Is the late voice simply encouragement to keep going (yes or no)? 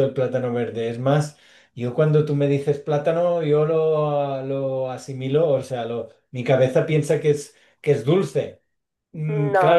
yes